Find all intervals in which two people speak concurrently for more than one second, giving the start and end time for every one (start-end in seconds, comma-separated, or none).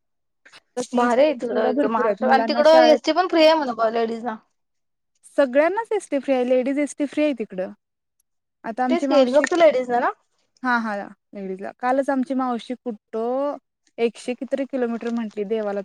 1.0-3.0